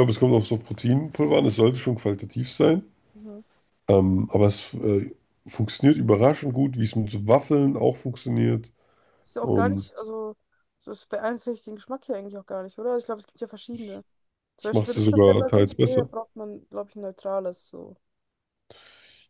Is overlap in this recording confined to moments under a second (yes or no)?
no